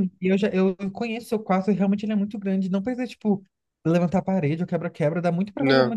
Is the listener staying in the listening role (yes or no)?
yes